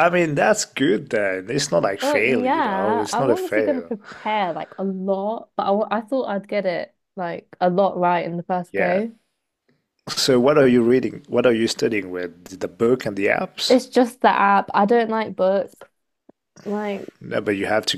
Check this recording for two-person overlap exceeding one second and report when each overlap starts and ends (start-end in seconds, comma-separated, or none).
2.0-3.9